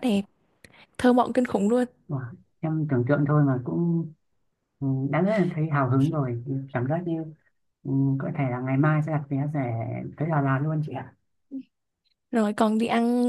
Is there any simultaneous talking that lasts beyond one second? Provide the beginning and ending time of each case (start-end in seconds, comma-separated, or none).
none